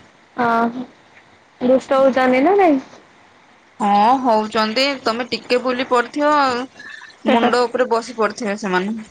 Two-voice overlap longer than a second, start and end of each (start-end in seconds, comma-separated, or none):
none